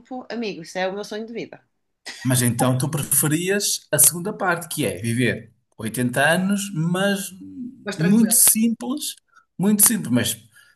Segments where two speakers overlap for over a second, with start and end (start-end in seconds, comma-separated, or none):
none